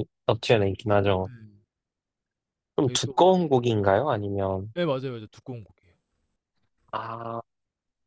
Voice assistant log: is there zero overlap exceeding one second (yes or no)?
yes